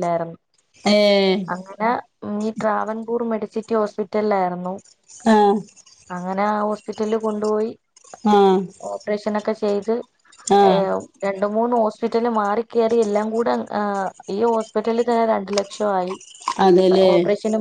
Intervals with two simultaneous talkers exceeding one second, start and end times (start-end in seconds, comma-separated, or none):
none